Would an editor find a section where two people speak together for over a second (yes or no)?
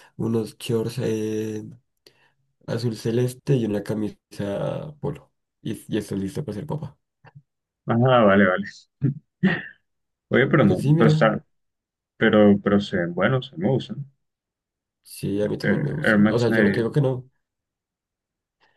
yes